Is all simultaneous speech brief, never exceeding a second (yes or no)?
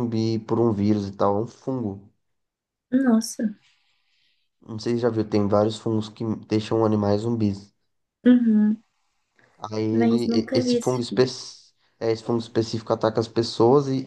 no